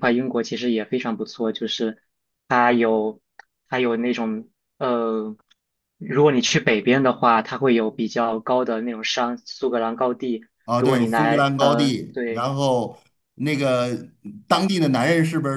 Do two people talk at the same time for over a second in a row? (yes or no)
yes